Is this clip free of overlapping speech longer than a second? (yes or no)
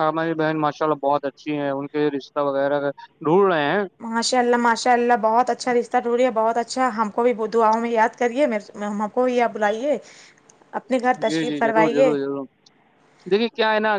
yes